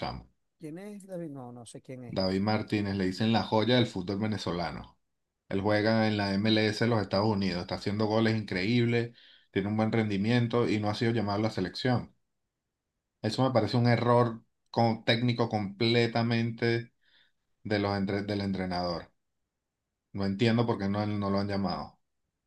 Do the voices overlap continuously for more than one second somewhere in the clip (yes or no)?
no